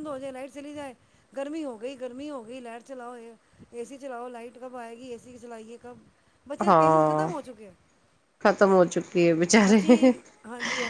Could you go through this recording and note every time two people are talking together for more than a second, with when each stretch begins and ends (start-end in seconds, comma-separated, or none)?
none